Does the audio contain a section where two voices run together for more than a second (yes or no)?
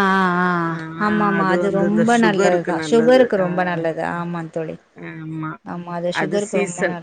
yes